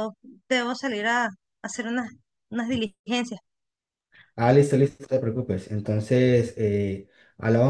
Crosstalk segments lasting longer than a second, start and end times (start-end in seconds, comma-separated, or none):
none